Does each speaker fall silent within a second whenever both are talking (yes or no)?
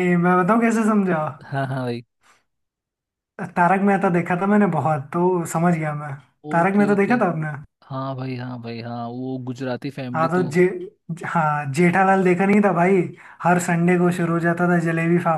yes